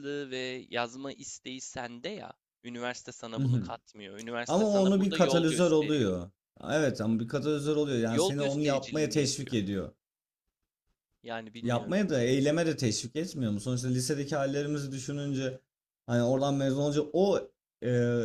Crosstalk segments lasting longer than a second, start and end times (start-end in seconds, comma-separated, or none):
4.5-6.1, 8.1-9.6